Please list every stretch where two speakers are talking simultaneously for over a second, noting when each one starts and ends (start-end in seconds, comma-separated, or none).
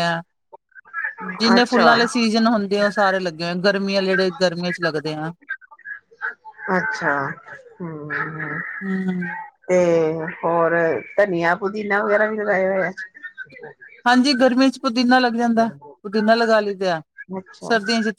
none